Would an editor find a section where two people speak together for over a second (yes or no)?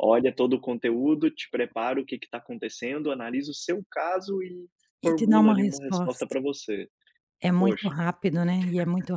yes